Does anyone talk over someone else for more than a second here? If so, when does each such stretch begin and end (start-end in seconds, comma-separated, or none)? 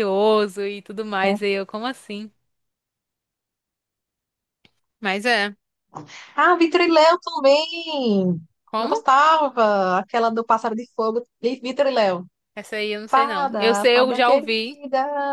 13.1-14.8